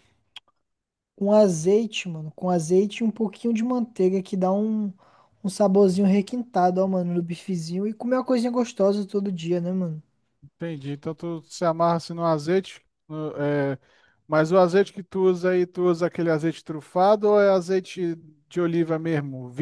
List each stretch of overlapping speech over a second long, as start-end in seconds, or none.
none